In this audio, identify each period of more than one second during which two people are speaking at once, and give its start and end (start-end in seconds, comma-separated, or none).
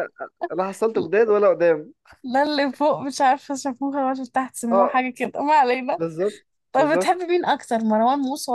none